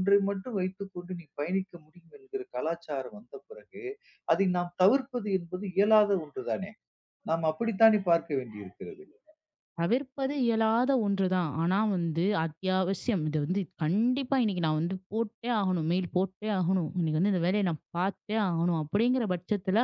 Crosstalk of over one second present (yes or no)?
no